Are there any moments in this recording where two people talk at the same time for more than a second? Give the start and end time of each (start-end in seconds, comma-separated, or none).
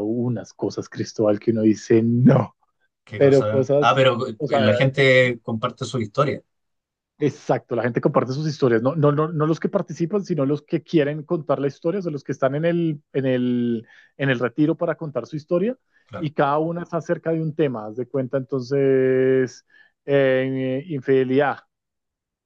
3.1-4.7